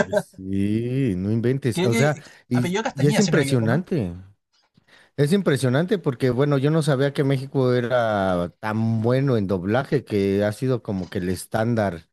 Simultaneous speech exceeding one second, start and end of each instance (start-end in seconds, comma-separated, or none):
1.7-3.8